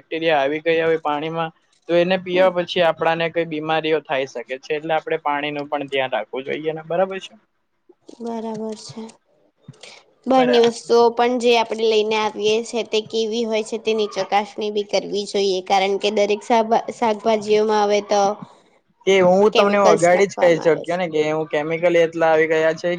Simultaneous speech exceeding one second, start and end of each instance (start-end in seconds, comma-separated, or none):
19.5-21.0